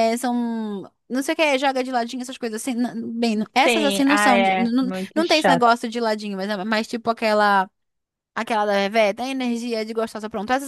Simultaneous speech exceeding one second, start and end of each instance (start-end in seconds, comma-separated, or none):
3.6-5.7